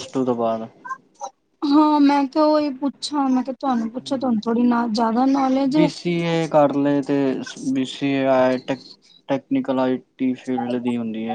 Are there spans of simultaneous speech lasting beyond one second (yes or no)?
no